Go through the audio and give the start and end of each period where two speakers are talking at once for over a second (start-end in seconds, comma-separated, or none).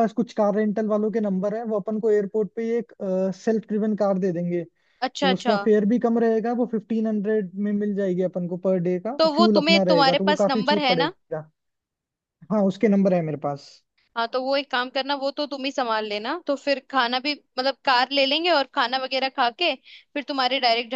9.2-11.1